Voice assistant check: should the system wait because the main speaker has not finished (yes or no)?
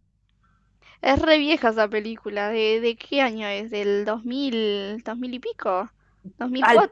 no